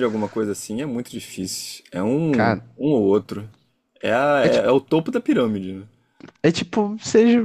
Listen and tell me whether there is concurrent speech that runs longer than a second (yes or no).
no